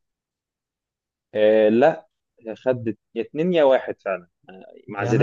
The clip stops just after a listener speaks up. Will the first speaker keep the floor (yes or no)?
no